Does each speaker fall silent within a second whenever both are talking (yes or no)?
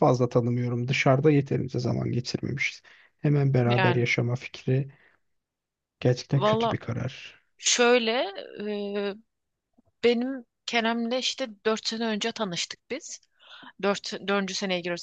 yes